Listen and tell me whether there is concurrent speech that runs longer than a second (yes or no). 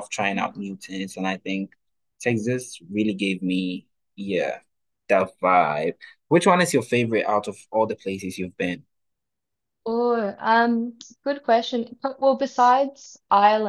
no